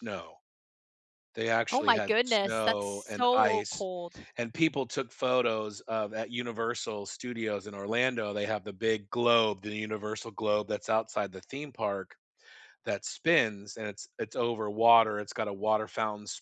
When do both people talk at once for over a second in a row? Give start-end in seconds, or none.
1.7-3.9